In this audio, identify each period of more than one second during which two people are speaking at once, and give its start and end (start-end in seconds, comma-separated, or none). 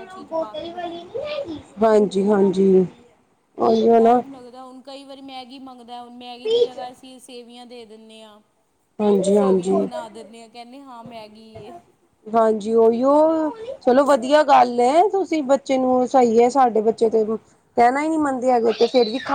none